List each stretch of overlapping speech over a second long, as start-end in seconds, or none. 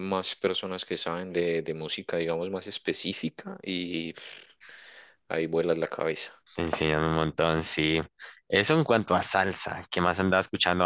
none